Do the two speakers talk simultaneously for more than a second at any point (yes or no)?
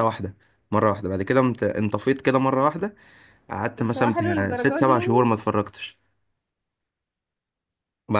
yes